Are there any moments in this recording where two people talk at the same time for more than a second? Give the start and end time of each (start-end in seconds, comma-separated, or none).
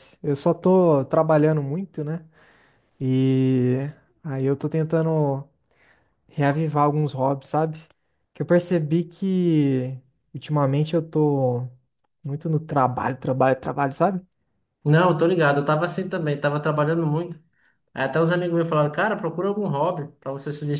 none